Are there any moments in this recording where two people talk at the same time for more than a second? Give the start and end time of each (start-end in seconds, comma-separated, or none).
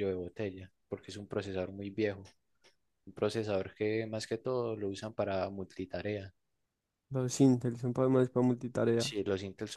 none